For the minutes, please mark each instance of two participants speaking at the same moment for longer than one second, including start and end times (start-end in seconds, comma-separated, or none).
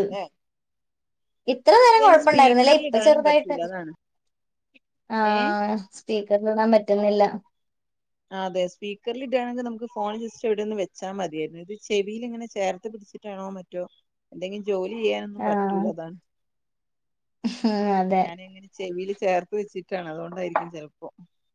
1.9-3.6